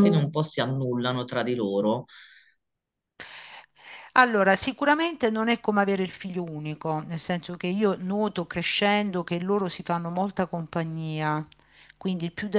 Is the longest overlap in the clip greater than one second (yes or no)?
no